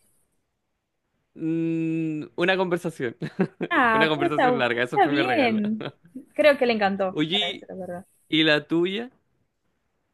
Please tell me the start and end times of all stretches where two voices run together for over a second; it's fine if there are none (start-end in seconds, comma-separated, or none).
3.9-5.6